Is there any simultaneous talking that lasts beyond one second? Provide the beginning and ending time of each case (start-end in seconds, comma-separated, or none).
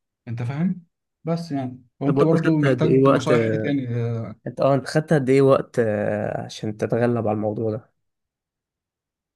2.1-3.3